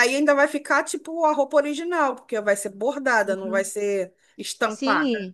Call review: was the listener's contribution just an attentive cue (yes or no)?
no